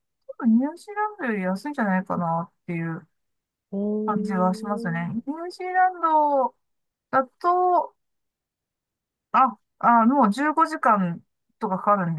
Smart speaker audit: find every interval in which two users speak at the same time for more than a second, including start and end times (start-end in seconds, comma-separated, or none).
4.0-5.3